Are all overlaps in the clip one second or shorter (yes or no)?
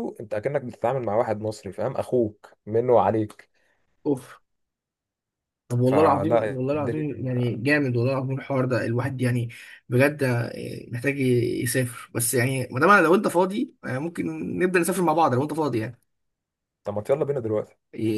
no